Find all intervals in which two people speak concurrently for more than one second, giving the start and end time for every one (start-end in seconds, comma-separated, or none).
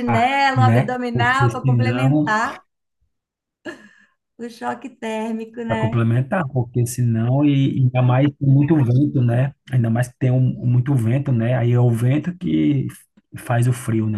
0.6-2.4